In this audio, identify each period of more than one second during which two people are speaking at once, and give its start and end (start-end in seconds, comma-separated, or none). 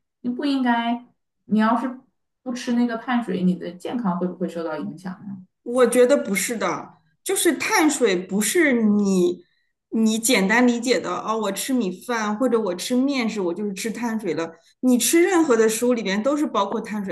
none